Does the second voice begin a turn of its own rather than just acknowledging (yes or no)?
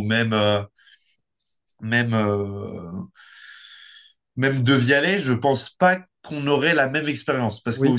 no